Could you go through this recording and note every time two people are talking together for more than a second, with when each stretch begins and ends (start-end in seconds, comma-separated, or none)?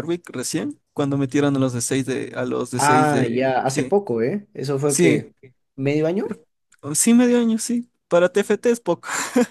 2.7-4.0